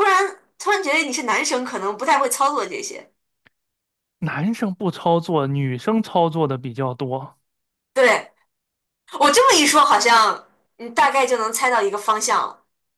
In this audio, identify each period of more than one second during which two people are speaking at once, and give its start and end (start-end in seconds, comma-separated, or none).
none